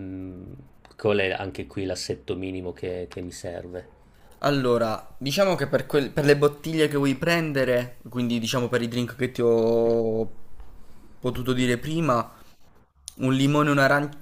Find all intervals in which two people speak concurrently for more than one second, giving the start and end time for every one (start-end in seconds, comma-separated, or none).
none